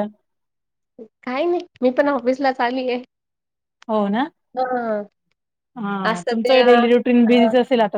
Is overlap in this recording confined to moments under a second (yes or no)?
yes